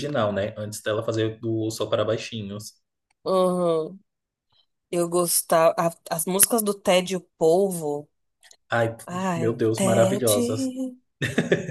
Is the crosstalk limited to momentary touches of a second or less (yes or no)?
no